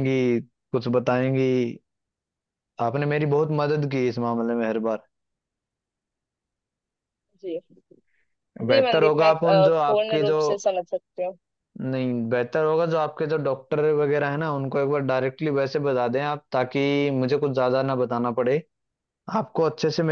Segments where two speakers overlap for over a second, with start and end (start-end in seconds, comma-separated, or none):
8.7-10.4